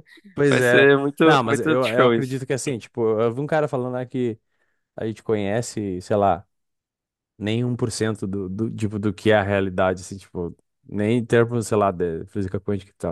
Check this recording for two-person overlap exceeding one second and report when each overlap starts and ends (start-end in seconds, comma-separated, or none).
0.5-2.4